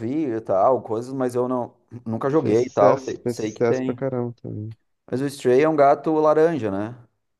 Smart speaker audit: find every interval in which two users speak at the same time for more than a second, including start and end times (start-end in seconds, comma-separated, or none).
2.3-4.0